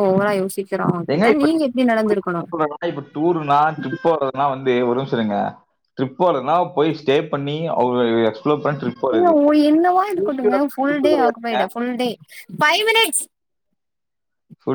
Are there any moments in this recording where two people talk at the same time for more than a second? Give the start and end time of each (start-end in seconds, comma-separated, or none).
10.1-11.6